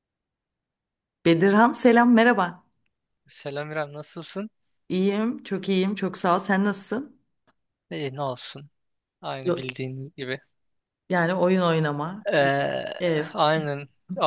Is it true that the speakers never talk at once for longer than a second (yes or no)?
yes